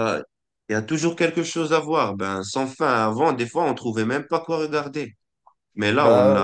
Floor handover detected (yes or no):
no